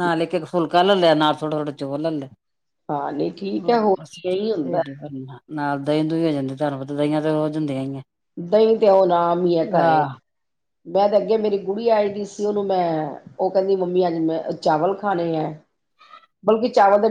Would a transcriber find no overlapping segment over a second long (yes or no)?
no